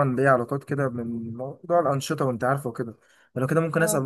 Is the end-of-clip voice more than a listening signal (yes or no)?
no